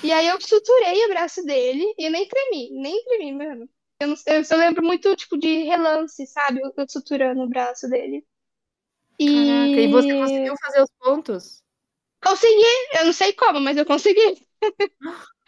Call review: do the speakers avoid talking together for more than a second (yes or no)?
no